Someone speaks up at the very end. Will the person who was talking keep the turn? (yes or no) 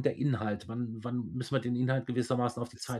no